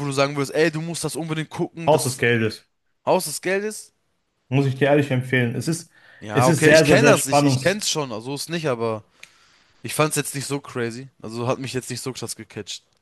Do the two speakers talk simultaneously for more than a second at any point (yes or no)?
yes